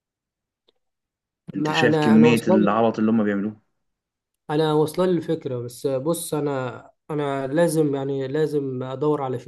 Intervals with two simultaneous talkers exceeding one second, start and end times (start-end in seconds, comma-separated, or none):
1.6-2.9